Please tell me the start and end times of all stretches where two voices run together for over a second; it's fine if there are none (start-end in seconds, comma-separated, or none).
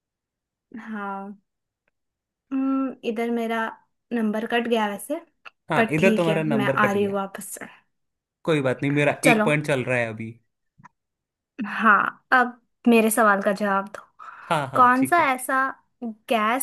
5.8-7.2